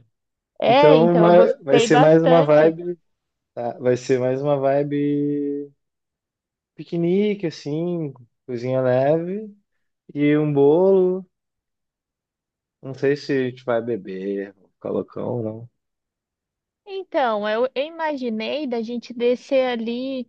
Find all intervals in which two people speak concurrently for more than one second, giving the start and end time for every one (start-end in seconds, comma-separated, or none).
0.7-2.8